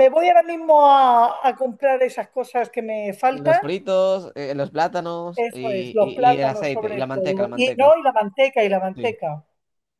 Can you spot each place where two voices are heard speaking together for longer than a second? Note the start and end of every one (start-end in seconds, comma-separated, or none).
5.3-7.9